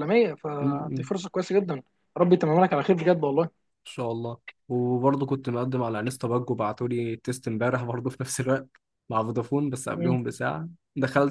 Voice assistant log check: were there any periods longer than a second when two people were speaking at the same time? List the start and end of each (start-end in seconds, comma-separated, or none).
none